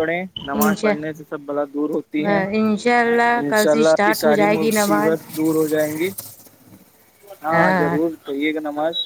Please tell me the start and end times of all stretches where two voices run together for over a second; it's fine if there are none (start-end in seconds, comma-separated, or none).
3.4-5.1